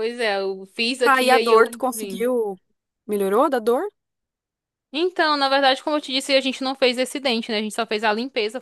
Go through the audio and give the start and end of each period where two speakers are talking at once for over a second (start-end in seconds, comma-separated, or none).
1.0-2.3